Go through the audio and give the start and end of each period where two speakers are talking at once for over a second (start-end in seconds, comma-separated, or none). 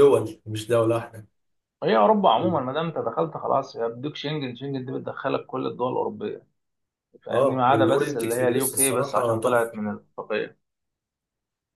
7.3-9.8